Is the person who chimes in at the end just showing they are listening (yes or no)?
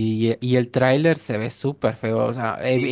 yes